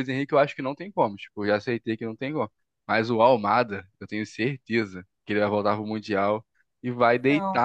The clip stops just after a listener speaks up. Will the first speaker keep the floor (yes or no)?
yes